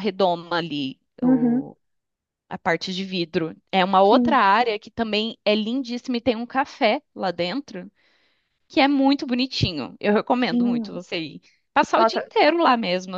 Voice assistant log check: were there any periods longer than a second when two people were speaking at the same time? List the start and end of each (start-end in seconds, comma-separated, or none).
none